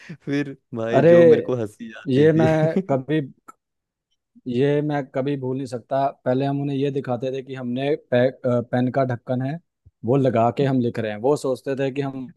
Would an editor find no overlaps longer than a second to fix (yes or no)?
yes